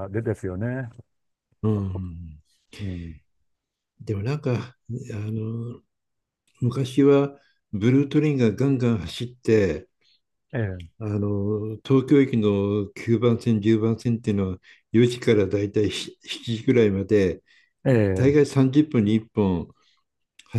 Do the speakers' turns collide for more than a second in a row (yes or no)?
no